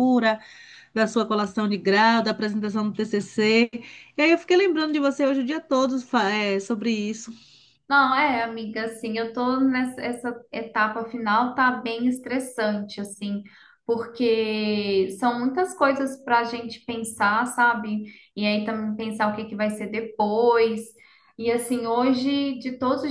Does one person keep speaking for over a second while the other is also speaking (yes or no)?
no